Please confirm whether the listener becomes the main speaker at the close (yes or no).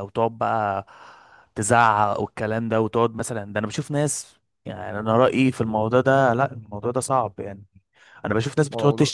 no